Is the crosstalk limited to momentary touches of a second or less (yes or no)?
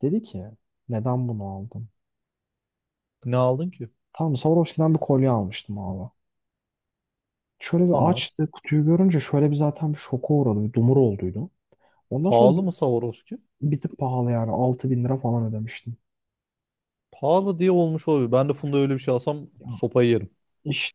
yes